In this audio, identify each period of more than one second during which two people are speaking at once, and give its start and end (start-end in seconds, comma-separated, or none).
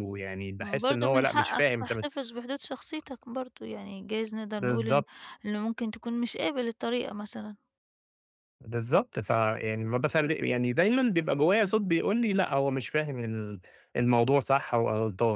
0.6-2.1